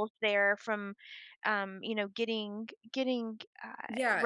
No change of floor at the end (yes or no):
no